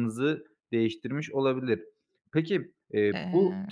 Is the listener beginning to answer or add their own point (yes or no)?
no